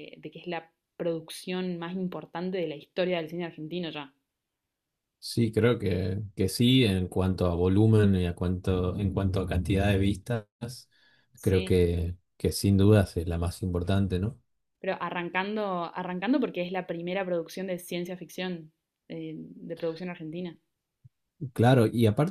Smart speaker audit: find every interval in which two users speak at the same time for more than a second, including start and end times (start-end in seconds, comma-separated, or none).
none